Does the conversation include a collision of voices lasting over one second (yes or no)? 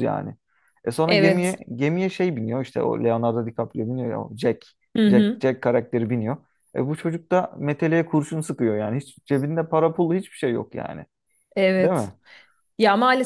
no